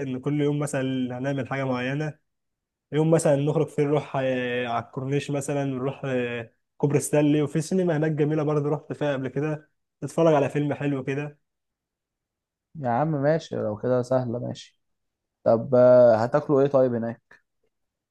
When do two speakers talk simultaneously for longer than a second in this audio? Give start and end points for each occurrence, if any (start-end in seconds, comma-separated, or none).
none